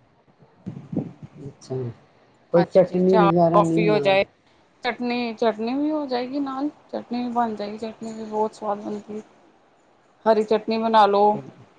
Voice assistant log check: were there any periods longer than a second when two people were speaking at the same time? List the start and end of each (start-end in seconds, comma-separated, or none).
2.6-4.2